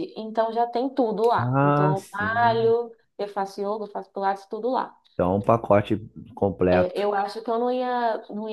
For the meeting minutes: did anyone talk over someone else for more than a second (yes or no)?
yes